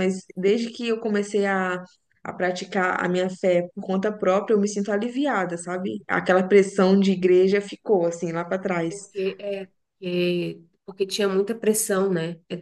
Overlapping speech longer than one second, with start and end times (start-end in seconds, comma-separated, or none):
none